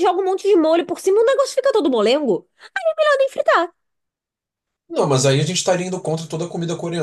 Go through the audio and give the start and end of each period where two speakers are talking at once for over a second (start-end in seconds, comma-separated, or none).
none